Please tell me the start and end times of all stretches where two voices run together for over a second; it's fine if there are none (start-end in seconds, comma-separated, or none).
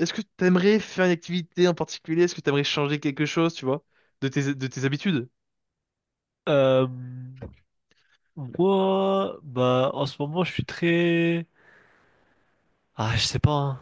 none